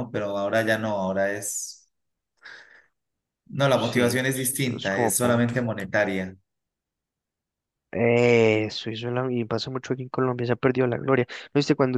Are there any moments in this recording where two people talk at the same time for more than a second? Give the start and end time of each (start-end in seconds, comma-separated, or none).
3.8-5.5